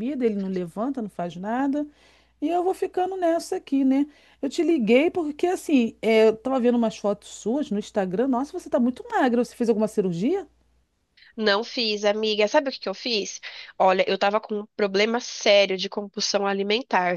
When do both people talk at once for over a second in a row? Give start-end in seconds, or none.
none